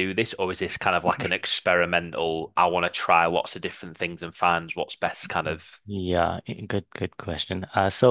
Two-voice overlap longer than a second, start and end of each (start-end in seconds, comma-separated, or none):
none